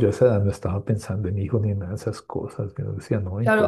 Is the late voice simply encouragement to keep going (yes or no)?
no